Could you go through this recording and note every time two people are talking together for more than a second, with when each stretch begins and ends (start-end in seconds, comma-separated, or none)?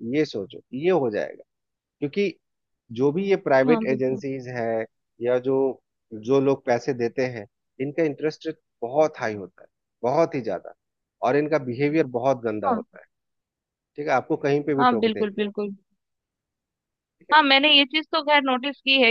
none